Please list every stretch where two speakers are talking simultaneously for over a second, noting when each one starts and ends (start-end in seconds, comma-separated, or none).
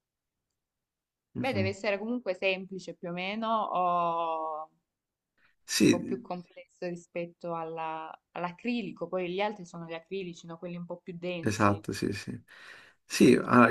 none